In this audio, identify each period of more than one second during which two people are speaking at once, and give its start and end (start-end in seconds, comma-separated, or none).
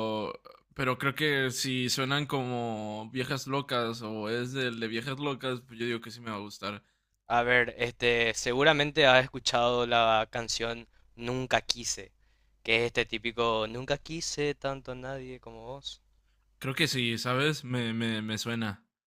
none